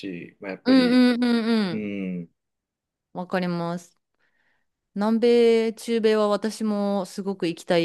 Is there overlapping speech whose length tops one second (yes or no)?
no